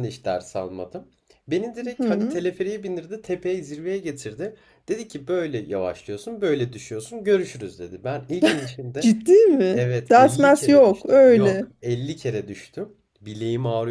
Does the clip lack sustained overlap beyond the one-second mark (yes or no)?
no